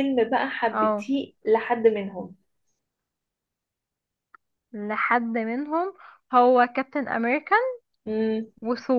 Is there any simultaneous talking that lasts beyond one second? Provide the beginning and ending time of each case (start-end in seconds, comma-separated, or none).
none